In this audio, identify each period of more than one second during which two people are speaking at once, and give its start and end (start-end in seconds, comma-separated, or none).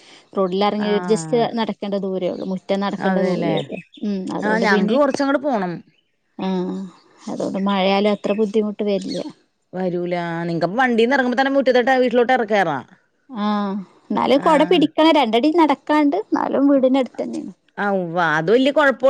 none